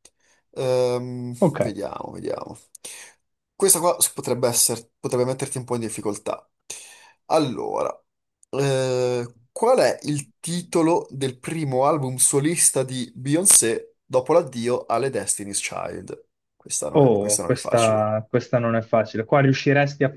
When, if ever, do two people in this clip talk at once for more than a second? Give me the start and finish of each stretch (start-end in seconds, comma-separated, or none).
16.9-18.1